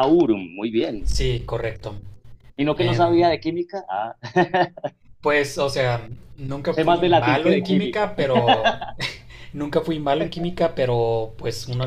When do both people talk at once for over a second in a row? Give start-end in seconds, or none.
6.7-8.1